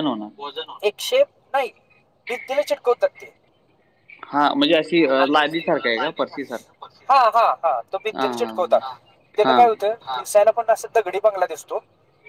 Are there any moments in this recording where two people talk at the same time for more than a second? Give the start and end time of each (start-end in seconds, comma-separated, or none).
none